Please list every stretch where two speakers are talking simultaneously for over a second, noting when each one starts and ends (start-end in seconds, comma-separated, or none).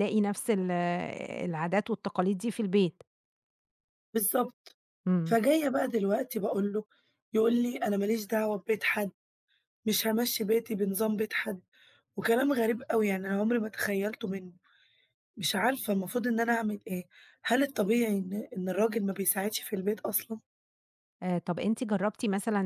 none